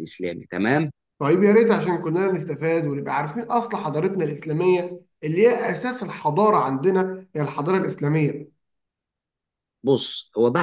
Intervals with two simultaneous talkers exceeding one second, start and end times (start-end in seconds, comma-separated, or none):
none